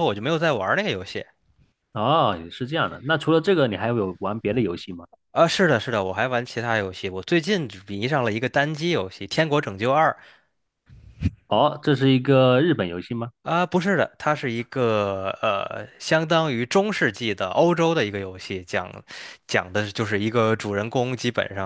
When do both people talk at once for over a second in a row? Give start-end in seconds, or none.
none